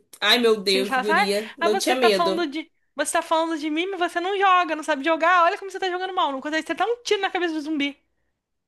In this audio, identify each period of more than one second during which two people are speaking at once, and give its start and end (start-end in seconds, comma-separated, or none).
0.7-2.5